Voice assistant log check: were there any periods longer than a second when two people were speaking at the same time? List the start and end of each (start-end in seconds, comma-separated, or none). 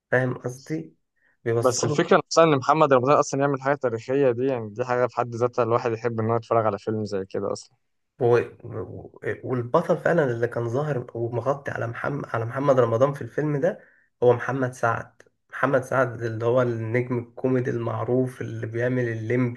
none